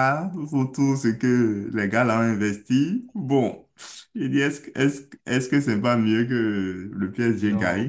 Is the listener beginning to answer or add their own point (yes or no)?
yes